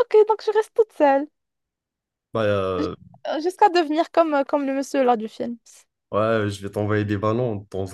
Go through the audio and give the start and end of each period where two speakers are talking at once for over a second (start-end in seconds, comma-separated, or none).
none